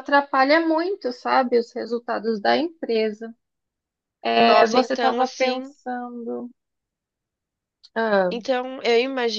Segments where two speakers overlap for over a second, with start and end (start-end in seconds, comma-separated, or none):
4.4-5.7